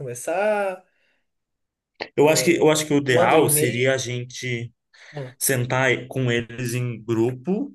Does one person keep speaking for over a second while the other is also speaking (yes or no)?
yes